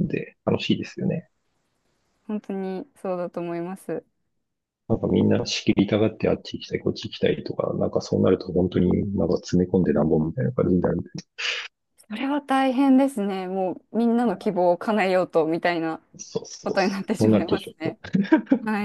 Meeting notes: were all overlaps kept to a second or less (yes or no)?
no